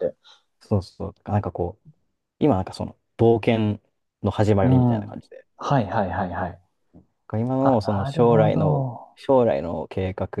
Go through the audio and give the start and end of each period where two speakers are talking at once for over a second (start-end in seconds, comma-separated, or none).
7.6-9.2